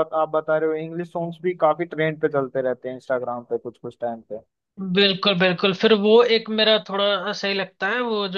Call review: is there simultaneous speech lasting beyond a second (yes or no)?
no